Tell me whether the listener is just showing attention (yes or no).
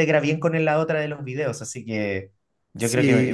no